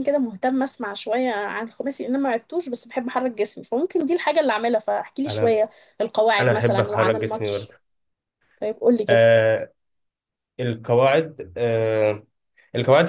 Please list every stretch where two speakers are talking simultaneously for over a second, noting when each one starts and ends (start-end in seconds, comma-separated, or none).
6.4-7.7